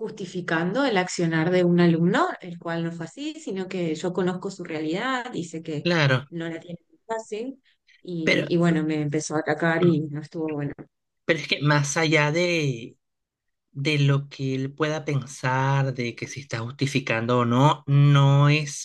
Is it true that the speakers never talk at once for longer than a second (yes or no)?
yes